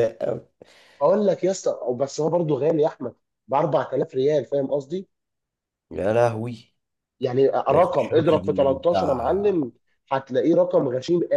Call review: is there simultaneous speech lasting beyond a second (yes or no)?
yes